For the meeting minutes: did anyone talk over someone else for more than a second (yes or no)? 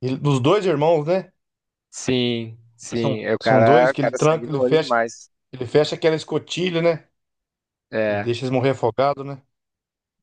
yes